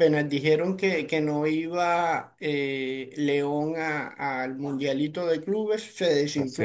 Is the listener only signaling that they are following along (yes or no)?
no